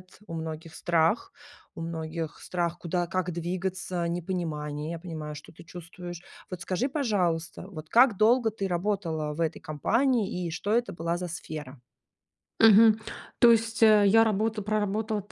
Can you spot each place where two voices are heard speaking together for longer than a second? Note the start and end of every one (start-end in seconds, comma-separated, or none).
none